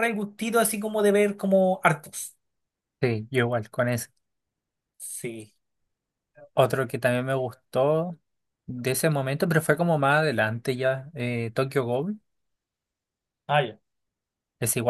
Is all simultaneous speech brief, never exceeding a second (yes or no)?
yes